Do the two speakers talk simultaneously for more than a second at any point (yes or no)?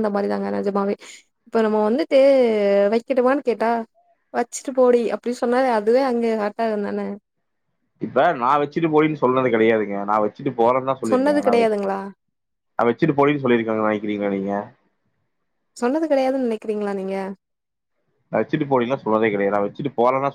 no